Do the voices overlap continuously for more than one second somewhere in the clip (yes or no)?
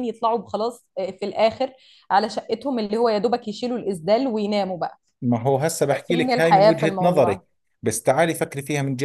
yes